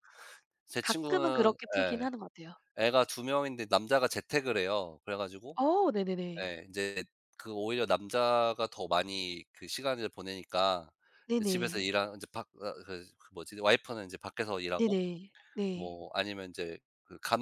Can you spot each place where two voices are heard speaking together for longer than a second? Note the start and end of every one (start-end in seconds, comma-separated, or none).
0.8-2.1